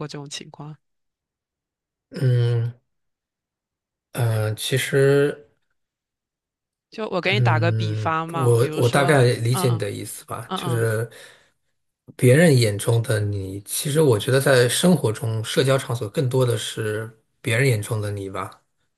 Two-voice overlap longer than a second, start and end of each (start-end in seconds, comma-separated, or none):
7.2-9.8